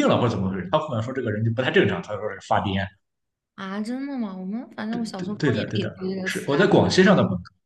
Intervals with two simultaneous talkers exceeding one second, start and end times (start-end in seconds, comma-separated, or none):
4.9-6.6